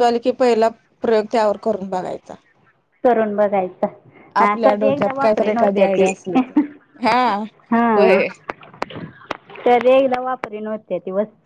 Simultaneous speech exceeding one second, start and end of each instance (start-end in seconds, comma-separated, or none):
4.4-6.1